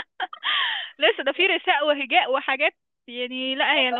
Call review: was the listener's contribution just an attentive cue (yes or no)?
yes